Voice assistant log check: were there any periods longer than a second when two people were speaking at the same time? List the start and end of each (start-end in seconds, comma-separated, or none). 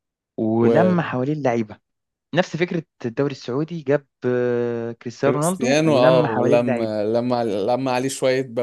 5.3-7.0